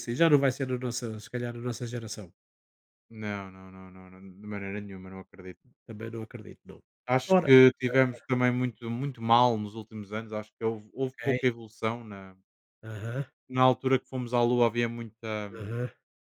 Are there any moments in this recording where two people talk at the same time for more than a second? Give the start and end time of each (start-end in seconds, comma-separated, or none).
none